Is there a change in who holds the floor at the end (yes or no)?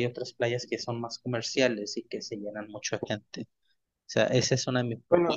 no